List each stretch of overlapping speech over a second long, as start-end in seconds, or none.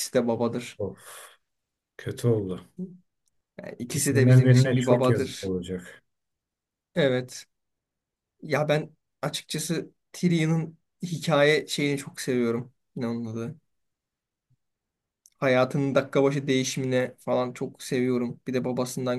3.8-5.5